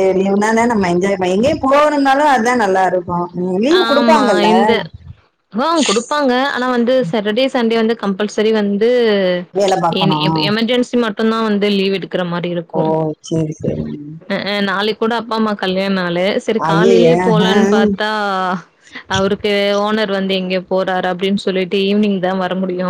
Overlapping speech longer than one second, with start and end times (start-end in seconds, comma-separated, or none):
none